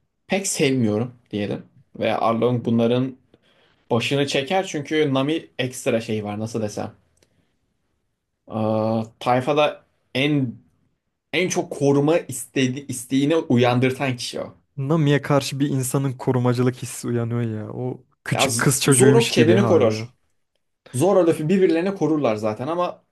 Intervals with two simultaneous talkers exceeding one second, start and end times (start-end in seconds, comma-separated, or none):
18.3-20.1